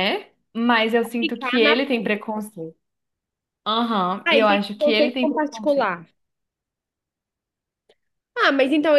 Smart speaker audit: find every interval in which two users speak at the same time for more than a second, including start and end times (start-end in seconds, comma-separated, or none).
4.2-5.9